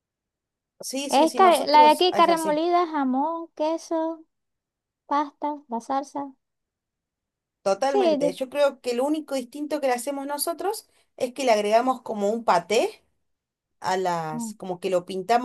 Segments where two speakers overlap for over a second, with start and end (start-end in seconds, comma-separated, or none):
1.1-2.6